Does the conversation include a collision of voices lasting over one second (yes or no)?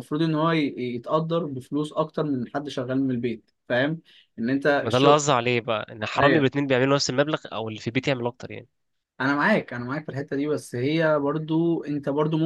no